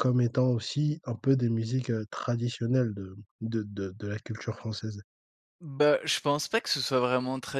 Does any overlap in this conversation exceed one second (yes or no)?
no